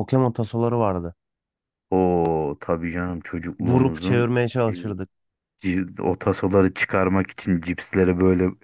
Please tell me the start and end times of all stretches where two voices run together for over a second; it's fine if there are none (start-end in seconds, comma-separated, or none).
3.6-5.0